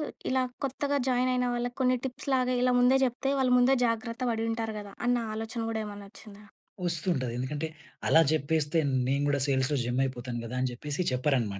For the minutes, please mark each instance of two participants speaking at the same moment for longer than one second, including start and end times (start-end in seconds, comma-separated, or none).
none